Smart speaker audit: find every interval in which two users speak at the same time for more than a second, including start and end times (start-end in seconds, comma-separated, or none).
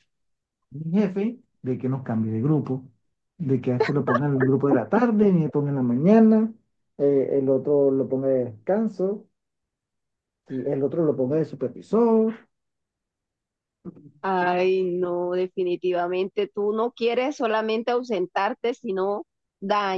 none